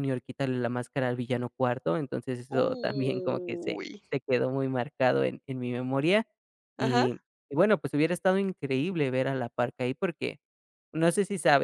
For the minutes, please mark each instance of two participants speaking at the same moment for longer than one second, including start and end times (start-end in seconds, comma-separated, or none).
2.5-4.0